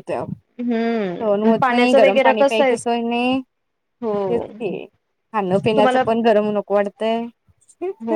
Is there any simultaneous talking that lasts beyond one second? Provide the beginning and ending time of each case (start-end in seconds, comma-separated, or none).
1.2-2.7